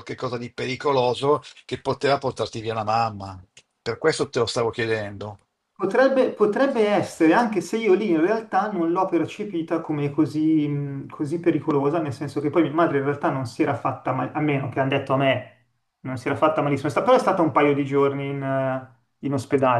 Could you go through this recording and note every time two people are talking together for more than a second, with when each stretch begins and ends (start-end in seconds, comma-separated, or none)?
none